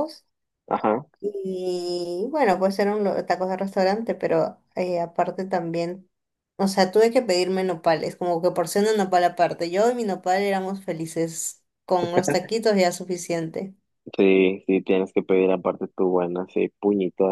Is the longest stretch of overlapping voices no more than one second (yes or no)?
yes